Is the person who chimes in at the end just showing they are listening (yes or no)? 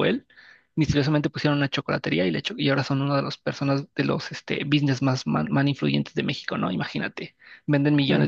yes